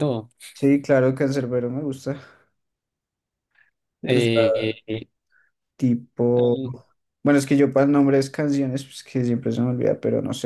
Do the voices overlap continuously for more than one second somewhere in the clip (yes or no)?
no